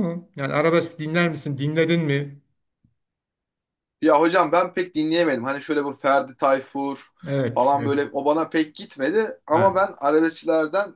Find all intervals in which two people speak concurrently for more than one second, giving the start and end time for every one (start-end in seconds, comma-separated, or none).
none